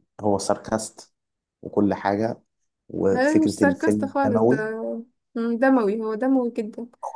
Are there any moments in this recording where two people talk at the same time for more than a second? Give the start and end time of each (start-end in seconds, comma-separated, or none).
3.1-4.6